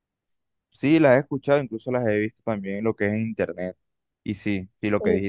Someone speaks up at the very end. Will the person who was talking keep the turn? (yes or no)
yes